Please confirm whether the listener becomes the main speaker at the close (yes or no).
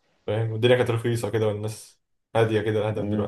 yes